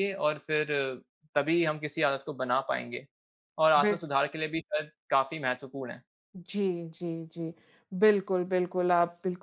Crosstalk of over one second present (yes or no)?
no